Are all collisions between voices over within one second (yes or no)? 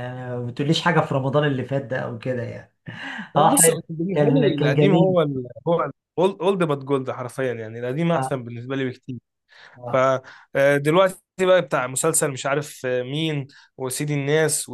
no